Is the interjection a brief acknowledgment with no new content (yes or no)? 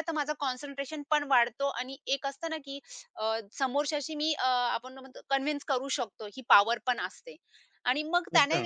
yes